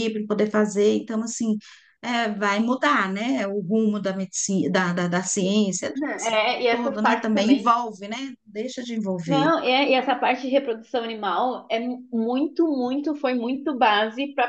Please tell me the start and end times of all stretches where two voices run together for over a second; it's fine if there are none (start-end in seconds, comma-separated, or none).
5.9-7.7